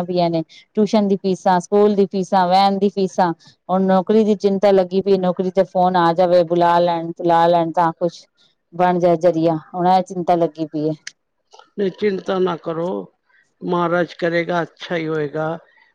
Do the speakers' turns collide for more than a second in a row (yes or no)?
no